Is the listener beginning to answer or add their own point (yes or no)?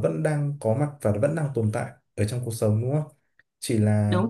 no